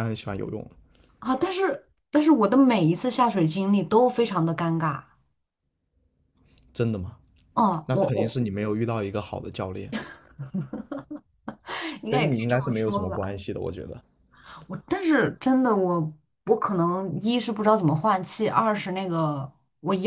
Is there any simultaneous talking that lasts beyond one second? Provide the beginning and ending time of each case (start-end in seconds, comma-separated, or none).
12.1-13.3